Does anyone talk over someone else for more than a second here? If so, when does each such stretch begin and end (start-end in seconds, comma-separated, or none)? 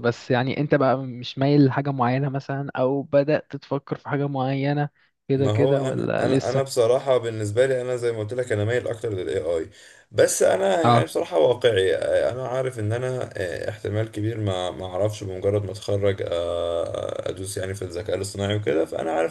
5.3-6.8